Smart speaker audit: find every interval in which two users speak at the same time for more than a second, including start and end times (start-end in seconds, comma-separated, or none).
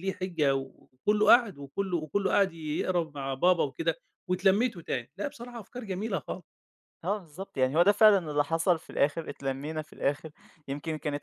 none